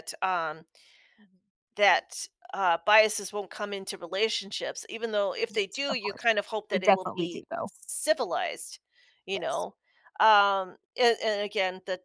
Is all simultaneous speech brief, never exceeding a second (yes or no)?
no